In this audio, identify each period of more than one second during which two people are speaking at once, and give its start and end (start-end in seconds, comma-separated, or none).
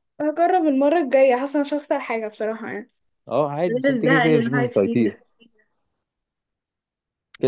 3.7-5.2